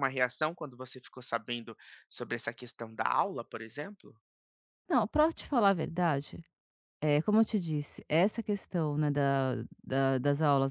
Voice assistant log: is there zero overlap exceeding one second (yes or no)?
yes